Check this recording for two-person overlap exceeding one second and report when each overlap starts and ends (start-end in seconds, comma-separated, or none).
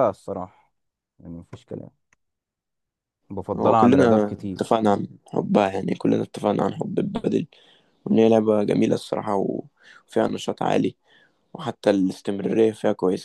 3.6-4.8